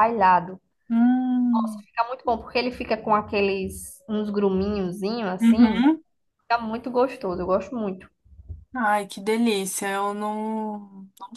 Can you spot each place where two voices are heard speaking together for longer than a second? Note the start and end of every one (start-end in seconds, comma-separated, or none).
none